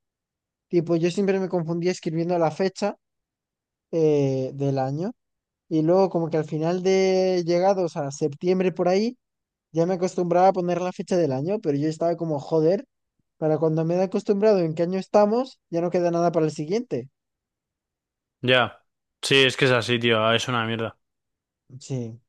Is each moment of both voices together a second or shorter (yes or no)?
yes